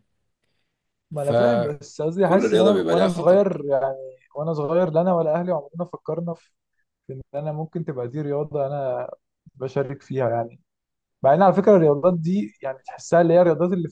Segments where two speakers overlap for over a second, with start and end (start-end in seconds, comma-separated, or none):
1.1-3.4